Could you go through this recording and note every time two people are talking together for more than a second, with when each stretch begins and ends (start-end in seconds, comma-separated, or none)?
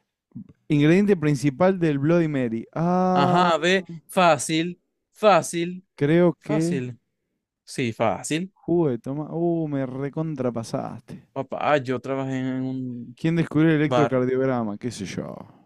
none